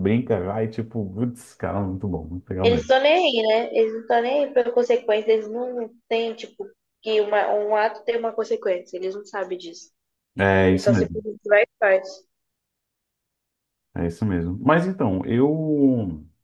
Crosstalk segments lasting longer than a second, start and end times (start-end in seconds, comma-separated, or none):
none